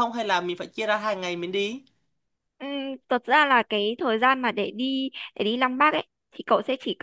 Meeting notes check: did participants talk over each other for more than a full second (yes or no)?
no